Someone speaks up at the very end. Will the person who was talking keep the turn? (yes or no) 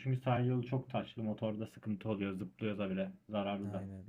no